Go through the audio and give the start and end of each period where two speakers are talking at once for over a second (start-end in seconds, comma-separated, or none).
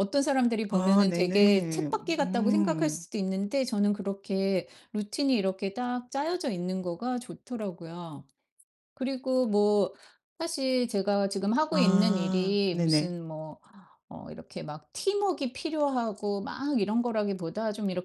0.7-3.0, 11.7-13.1